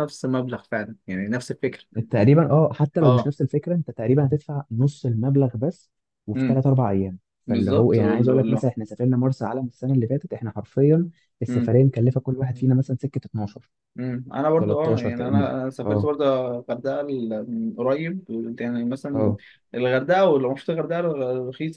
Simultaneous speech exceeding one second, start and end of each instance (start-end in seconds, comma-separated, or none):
7.5-8.7, 14.6-16.1